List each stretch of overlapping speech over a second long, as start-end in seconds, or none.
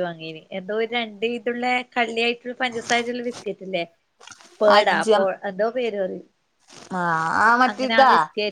none